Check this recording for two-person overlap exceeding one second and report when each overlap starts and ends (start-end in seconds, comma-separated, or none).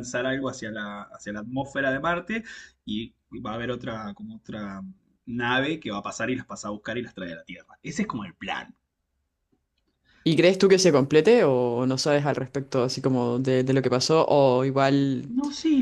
none